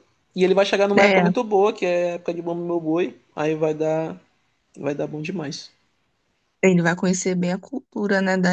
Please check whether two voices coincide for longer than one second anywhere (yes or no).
no